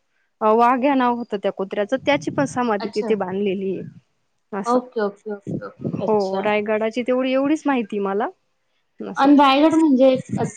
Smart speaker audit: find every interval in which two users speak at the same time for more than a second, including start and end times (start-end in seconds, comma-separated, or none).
none